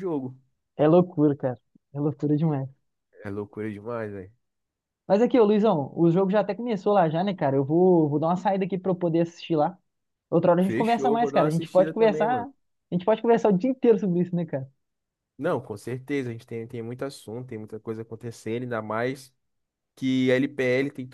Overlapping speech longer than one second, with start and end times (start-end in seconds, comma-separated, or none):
10.6-12.5